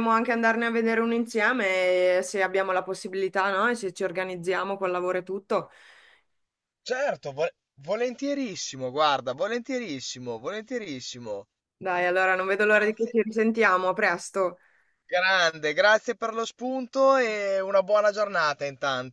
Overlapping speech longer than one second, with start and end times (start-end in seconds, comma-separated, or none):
none